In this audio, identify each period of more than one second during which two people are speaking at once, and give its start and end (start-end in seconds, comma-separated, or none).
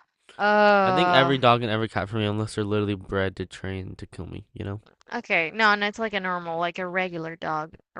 none